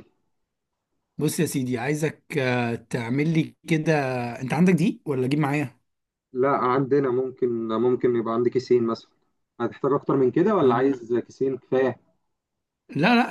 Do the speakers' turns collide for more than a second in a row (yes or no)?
no